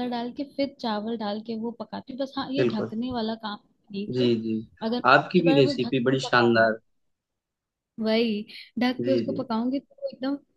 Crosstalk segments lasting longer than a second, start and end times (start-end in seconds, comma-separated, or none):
5.1-6.8